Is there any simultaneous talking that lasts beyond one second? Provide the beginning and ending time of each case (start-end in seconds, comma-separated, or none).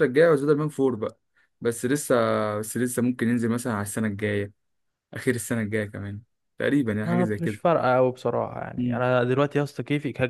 none